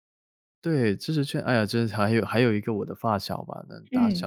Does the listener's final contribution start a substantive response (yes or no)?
no